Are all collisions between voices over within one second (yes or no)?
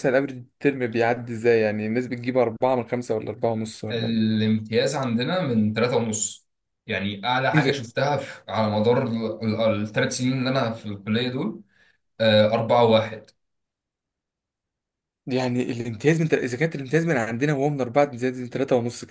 yes